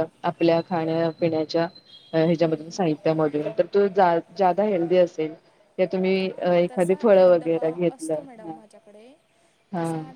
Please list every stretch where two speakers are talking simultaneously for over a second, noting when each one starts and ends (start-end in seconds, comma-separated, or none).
6.3-9.1